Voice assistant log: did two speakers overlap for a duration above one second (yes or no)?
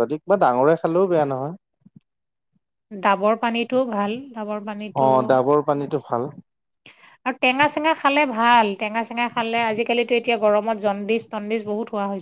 no